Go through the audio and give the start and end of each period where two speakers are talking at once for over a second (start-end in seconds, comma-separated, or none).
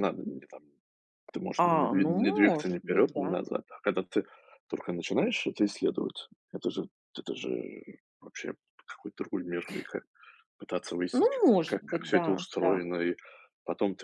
1.6-3.4, 11.1-12.8